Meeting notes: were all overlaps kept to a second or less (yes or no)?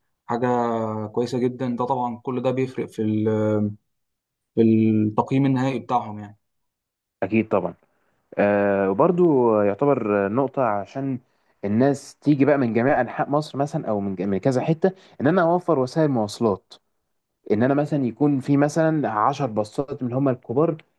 yes